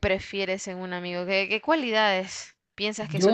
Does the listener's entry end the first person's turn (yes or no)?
yes